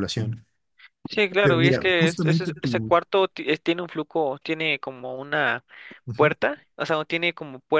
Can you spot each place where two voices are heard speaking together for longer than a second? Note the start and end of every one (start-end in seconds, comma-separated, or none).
1.4-2.9